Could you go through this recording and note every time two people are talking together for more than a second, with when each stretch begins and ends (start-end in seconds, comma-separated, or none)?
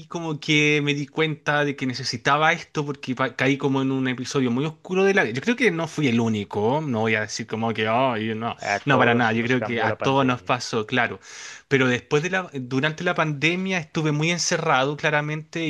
8.6-10.5